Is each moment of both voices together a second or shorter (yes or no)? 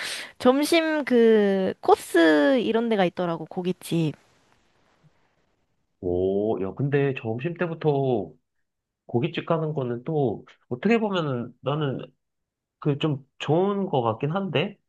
yes